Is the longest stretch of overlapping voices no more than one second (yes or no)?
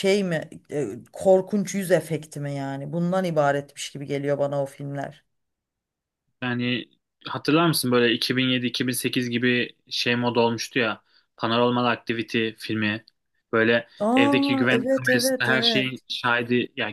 no